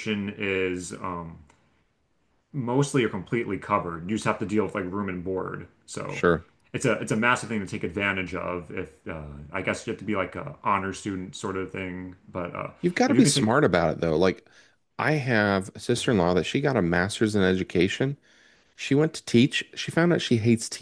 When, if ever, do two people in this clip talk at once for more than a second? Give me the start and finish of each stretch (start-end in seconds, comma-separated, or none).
none